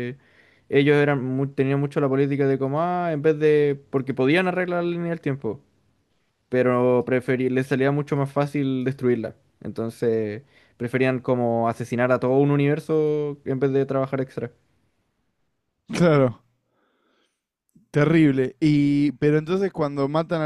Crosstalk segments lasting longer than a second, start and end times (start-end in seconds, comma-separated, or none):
none